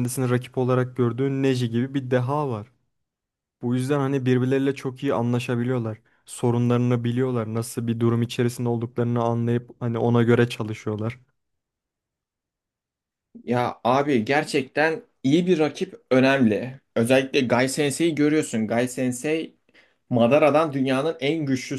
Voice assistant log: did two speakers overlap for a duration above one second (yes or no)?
no